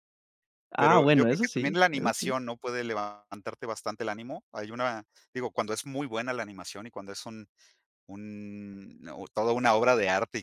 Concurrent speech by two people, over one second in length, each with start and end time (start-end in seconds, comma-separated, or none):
0.8-2.4